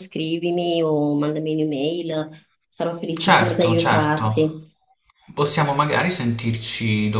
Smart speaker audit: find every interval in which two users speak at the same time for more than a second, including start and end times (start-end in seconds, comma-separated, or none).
3.1-4.5